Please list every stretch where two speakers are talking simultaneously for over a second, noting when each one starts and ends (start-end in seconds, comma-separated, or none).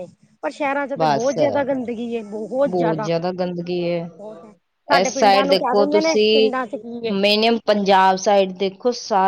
4.9-6.5